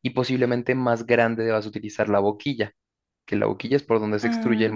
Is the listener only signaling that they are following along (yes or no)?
yes